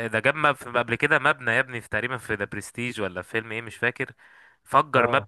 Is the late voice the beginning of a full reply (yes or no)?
no